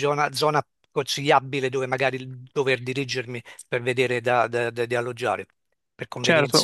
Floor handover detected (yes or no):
yes